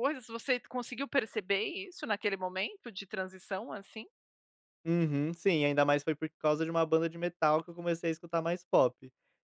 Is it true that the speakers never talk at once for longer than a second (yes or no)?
yes